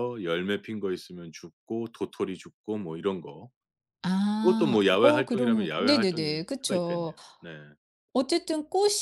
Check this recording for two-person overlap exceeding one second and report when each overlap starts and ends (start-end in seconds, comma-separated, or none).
4.4-7.1